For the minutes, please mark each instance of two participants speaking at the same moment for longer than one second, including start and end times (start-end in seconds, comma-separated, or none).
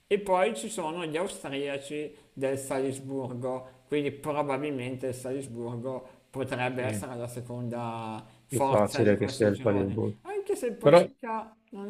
8.4-10.2